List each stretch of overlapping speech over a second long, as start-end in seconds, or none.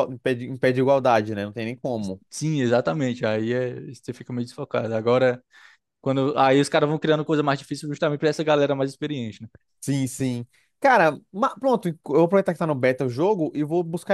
none